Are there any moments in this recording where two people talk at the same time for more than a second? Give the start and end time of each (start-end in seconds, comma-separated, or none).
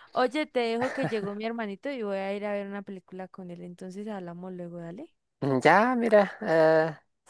none